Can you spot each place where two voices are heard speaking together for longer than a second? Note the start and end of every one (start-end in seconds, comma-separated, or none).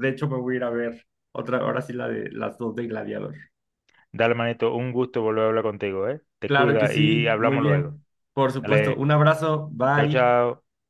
6.5-8.0